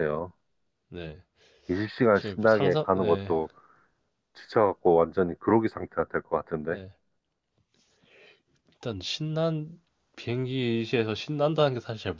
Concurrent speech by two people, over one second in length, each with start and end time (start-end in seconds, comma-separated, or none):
2.1-3.4